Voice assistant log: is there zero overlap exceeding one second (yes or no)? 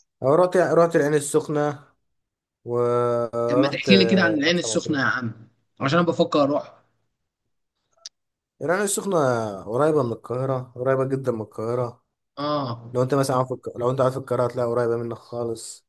no